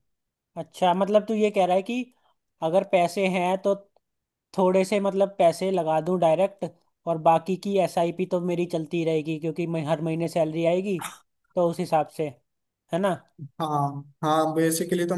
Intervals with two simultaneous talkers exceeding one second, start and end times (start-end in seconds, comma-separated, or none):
none